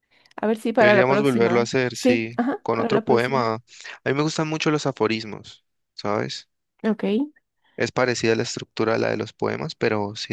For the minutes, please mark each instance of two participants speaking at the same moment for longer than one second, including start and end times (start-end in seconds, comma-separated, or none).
0.8-3.4